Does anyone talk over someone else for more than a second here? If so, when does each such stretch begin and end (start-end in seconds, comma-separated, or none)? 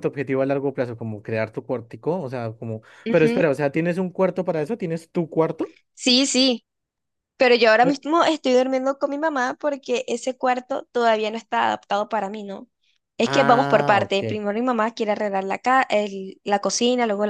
13.2-14.4